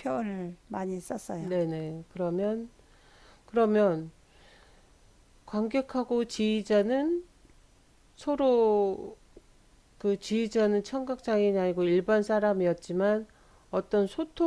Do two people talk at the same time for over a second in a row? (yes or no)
no